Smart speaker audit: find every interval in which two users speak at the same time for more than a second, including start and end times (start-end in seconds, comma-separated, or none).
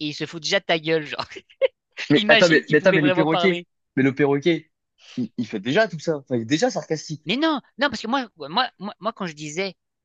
2.1-3.7